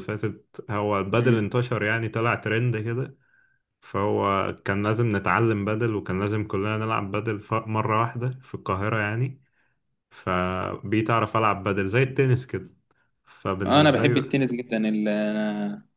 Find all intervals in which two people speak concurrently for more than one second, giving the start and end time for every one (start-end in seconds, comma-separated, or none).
none